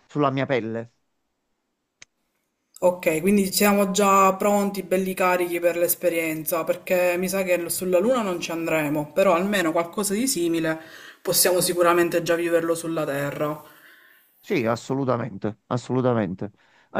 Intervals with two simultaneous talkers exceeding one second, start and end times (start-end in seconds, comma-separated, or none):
none